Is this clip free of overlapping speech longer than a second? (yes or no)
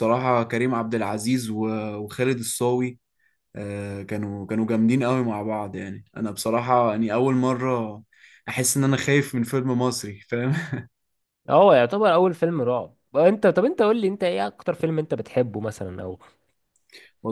yes